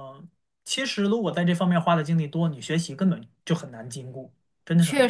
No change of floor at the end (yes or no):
no